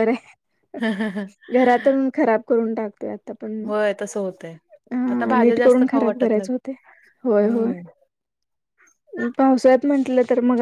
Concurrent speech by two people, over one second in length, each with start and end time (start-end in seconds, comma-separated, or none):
5.1-6.5